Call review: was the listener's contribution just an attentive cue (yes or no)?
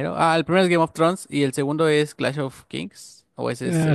no